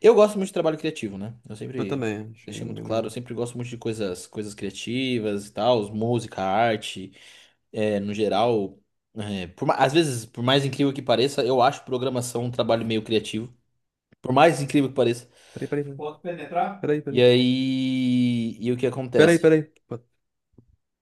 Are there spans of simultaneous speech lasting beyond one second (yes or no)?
yes